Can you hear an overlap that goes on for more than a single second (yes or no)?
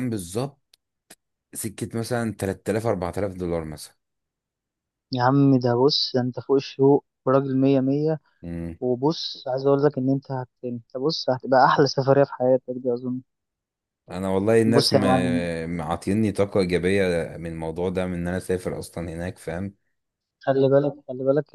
no